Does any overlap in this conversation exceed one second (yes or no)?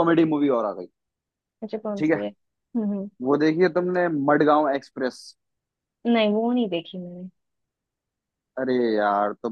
no